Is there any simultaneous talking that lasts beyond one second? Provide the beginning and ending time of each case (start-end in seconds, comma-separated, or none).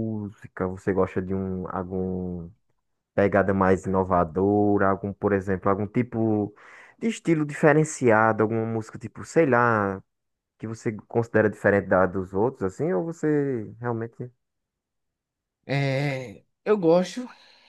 none